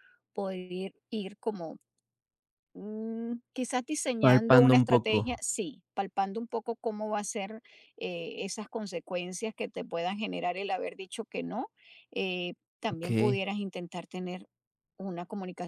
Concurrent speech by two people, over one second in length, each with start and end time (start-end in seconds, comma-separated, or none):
4.2-5.4